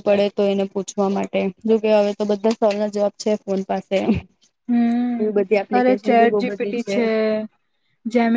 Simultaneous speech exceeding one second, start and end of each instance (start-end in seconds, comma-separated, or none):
5.2-6.8